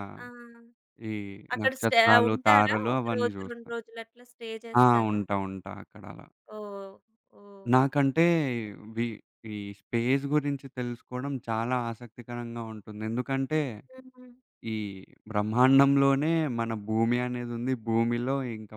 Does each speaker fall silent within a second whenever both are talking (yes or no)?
no